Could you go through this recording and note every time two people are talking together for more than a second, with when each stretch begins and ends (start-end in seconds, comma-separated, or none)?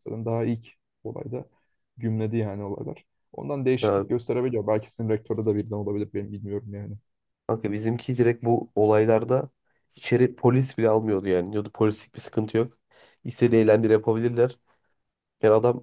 none